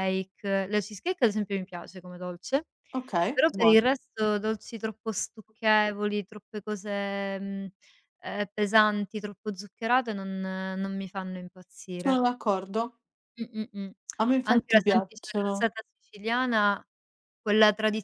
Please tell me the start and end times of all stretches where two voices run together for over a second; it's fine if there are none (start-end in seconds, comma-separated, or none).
14.4-15.7